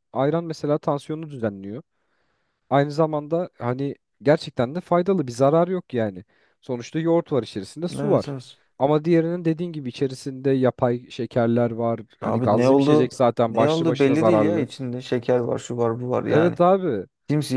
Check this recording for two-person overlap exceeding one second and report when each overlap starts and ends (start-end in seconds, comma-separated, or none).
12.2-14.7